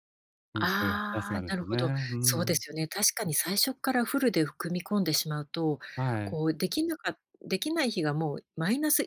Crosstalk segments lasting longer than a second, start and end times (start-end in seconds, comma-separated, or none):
0.6-2.6